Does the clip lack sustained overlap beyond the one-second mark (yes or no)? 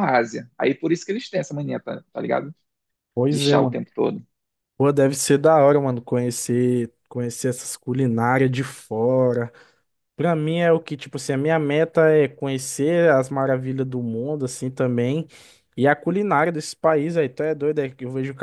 yes